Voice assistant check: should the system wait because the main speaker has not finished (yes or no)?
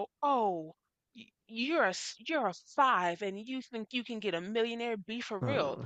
yes